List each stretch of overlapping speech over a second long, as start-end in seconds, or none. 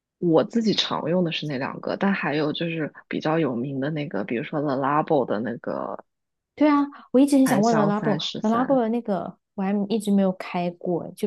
7.5-8.8